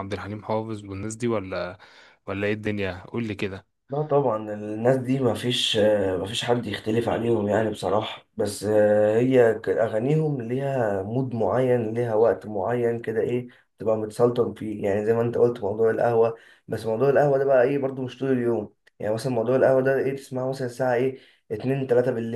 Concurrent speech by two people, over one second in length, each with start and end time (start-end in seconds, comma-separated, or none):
none